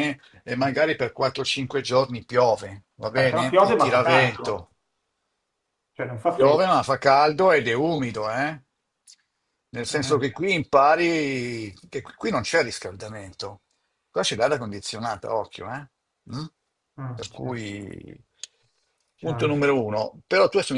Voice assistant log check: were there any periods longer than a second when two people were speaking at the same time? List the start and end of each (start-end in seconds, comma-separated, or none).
3.1-4.7